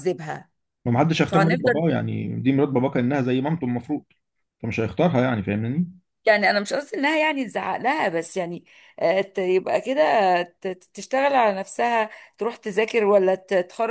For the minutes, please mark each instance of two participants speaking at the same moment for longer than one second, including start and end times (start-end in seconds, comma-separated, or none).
none